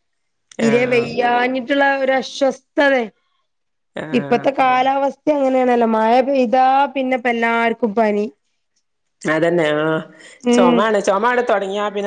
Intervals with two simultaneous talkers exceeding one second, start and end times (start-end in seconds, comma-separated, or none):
none